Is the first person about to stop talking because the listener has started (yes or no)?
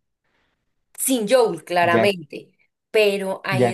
yes